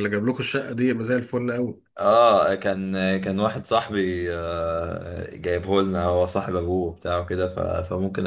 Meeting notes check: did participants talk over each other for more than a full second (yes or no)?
no